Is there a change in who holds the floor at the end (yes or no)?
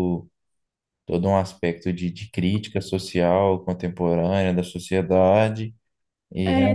yes